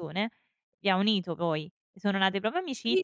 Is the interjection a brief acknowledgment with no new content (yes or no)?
no